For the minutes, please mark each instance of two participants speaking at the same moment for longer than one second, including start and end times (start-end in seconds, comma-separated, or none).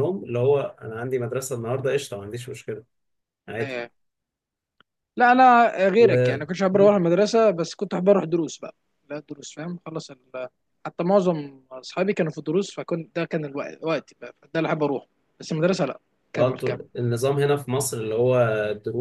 none